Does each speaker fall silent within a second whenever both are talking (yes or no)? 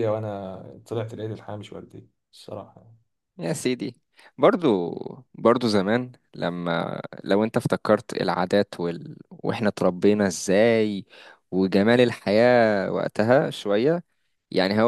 yes